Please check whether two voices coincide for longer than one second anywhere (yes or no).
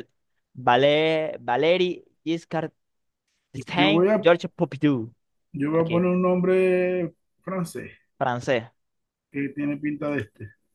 no